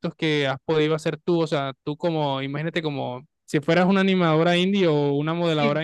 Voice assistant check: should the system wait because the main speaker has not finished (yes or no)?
yes